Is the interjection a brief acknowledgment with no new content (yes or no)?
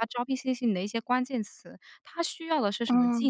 yes